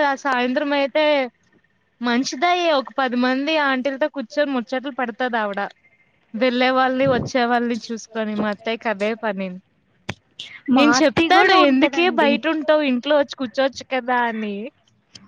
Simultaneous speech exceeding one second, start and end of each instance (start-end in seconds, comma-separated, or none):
10.8-12.3